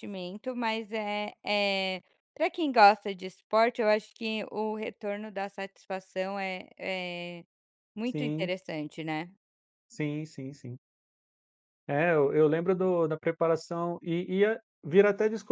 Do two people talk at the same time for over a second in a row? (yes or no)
no